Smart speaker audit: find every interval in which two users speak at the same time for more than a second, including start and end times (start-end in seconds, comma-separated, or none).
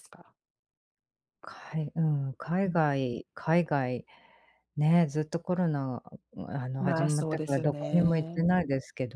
6.8-8.5